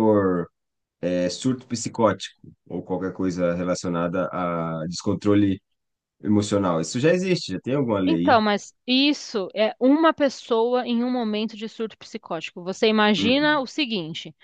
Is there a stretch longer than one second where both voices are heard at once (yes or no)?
no